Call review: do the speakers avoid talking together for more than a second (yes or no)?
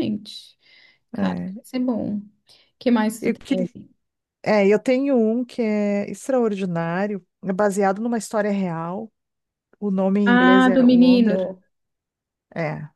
no